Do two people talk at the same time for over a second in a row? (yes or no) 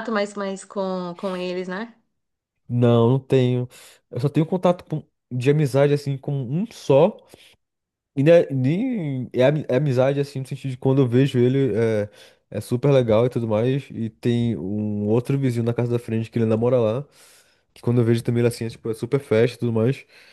no